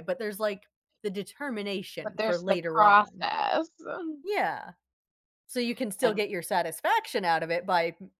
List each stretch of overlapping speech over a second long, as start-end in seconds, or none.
2.0-3.3